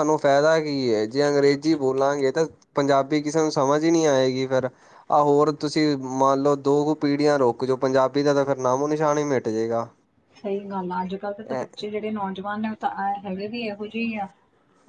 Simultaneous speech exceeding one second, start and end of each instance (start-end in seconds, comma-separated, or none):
none